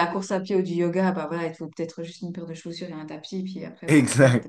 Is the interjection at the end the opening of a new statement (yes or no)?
yes